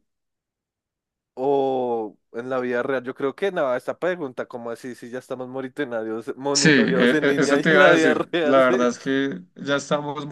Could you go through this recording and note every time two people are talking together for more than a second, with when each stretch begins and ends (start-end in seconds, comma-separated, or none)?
6.5-8.8